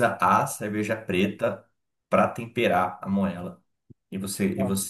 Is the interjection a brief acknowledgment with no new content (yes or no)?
yes